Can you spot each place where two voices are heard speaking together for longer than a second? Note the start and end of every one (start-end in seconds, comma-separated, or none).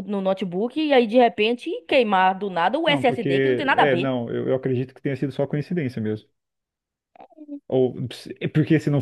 2.9-4.1